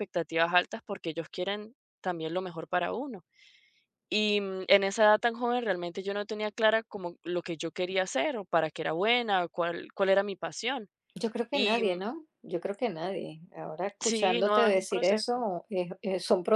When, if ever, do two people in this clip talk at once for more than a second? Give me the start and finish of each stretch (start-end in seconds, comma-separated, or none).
14.0-15.4